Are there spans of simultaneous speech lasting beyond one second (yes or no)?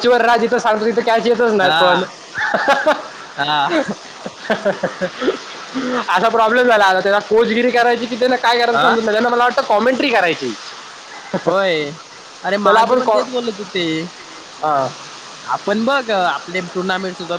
no